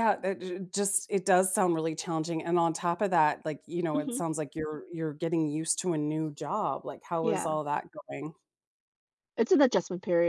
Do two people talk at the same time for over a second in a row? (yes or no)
no